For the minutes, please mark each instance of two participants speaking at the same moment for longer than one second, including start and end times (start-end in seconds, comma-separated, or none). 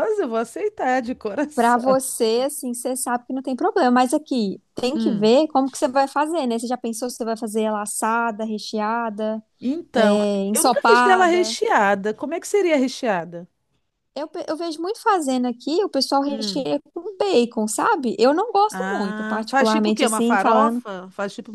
9.9-11.6, 18.7-20.8